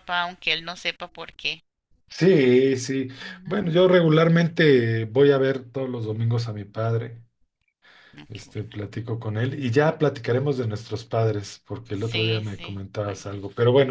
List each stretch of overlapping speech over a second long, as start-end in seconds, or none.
11.9-13.2